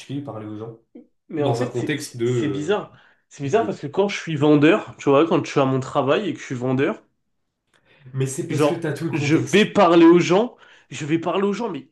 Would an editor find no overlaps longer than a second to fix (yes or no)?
no